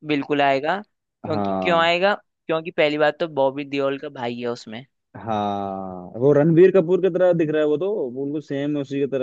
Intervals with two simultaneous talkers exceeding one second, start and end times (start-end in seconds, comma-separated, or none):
none